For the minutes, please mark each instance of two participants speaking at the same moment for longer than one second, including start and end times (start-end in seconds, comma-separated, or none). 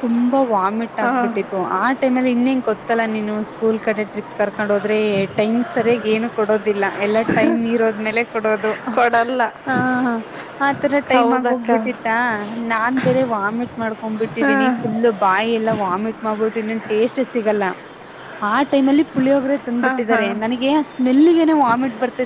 none